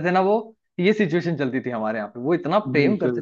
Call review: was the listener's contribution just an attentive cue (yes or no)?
yes